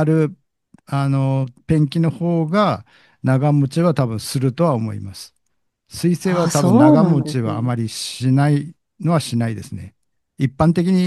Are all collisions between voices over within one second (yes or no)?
no